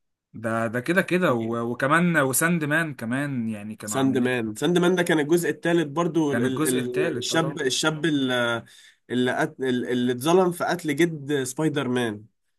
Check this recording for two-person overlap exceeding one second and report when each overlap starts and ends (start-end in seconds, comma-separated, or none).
6.3-7.6